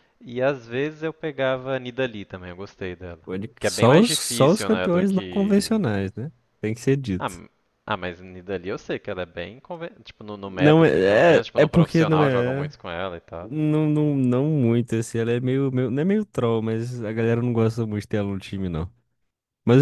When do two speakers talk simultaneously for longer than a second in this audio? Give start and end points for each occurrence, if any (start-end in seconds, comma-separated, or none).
3.6-5.8, 10.4-12.7